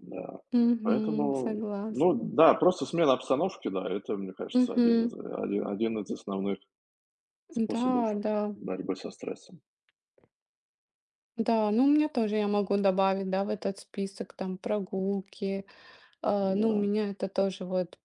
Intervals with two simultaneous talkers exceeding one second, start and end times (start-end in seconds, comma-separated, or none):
0.8-2.2